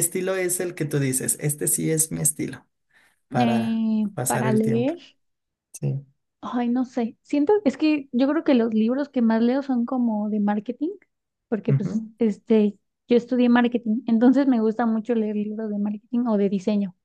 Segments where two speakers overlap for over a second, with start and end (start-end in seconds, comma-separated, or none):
3.3-4.9